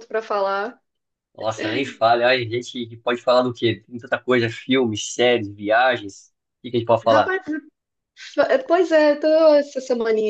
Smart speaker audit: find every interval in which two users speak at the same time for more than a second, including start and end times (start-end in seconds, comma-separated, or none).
none